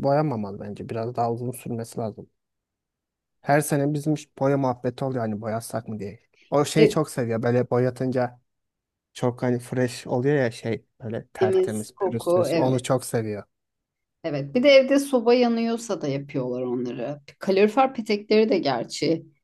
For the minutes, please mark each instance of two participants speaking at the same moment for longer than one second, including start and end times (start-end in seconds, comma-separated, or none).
11.4-12.8